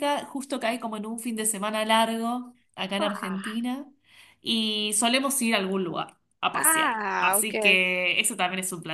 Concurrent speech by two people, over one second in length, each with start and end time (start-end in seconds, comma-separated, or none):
6.5-7.8